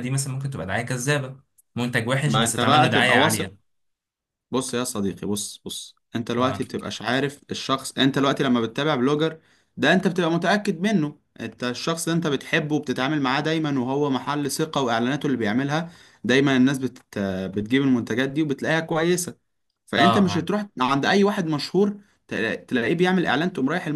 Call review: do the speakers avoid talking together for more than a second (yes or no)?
no